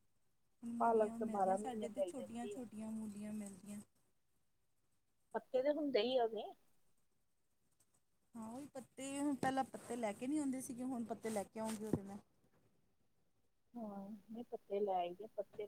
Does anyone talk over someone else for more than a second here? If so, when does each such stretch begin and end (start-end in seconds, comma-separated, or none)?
0.8-2.6